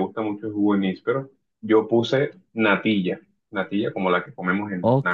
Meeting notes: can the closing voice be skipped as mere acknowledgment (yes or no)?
no